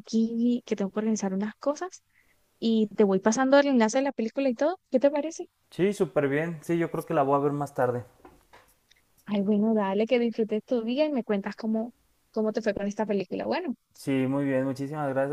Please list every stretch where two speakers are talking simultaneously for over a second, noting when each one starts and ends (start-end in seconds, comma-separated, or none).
none